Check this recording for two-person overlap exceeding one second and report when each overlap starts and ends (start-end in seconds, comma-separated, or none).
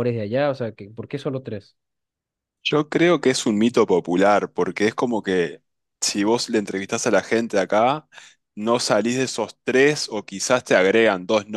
none